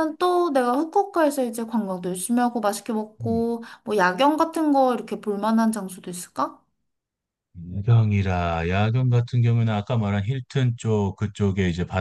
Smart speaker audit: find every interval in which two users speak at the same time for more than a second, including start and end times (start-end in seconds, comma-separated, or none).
none